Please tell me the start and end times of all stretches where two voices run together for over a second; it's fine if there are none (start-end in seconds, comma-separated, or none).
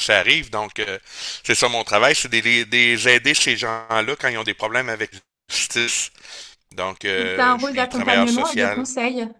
7.2-8.8